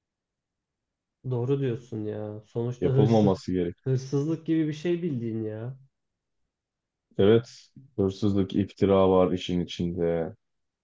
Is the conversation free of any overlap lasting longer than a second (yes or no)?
yes